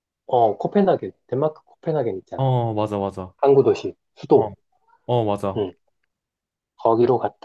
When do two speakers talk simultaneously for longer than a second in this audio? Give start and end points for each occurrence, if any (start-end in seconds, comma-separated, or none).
none